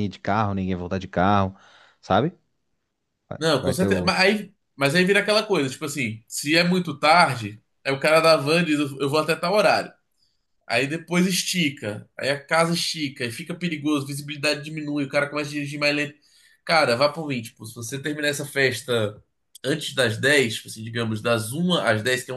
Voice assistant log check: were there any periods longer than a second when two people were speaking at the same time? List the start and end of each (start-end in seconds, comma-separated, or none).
none